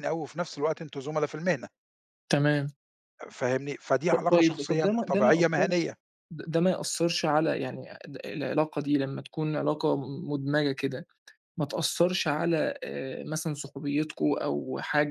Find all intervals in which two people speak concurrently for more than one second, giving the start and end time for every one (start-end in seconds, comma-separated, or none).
4.1-5.9